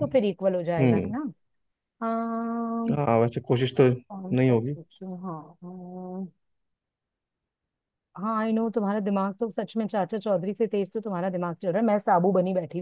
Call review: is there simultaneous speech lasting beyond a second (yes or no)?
no